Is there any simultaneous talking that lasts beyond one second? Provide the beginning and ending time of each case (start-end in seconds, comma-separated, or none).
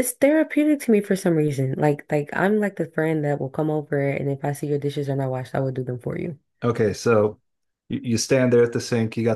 none